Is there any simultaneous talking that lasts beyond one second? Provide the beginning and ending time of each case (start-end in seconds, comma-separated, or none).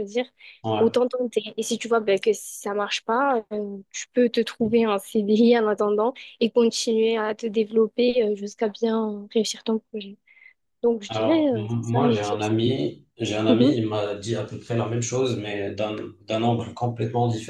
11.1-12.5